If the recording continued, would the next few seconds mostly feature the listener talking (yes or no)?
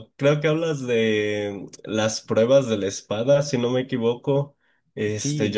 no